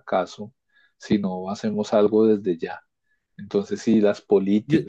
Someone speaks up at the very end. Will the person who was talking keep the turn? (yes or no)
yes